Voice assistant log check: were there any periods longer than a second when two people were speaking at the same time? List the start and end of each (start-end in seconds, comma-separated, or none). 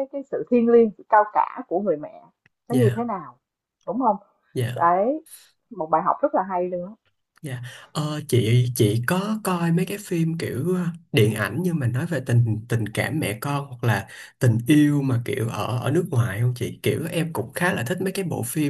none